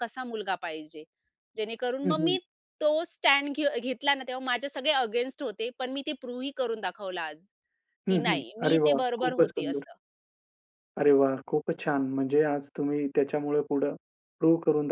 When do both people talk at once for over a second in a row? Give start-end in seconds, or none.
8.1-9.8